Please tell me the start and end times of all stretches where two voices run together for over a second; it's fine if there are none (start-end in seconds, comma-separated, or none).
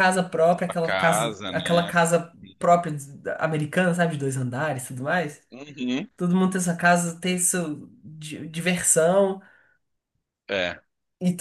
0.7-1.9